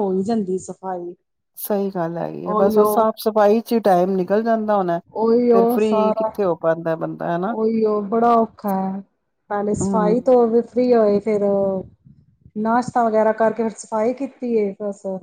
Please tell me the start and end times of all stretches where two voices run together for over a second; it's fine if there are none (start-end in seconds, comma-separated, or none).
none